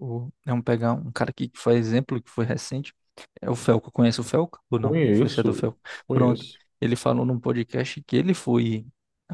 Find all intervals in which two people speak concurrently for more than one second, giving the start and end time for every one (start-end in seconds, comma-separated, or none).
4.8-6.4